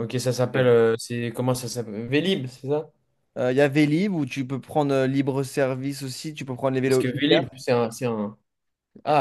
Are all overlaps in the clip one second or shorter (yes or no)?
yes